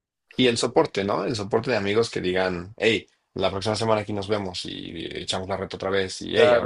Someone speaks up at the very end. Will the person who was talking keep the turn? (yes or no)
no